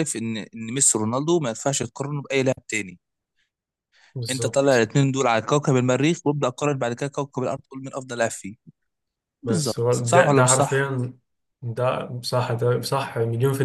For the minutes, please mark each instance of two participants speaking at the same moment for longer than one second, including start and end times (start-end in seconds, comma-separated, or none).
9.4-10.9